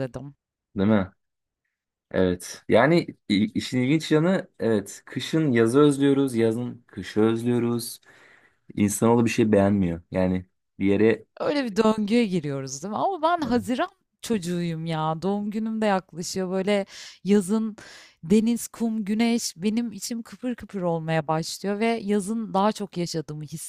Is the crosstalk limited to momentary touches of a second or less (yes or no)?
yes